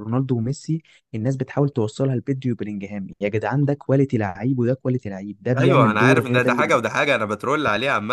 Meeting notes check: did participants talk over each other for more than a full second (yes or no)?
yes